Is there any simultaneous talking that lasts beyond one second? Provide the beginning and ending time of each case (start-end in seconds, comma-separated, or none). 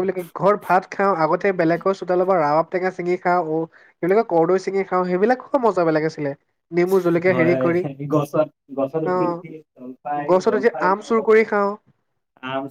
9.2-11.2